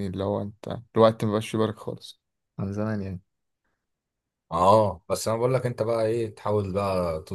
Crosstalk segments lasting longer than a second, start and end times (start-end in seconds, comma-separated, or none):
none